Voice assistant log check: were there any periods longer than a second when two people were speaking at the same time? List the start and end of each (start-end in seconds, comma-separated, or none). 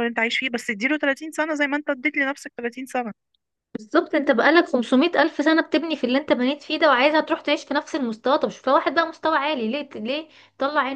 none